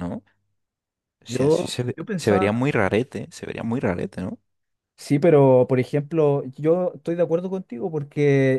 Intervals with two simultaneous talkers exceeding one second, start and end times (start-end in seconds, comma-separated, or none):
1.3-2.6